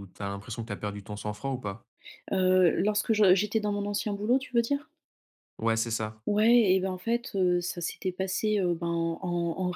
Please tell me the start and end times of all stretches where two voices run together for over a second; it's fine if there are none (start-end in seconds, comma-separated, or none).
none